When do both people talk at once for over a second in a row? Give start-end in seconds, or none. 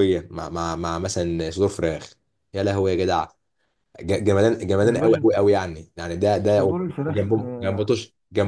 6.5-7.9